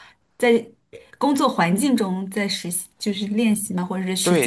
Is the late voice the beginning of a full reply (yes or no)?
yes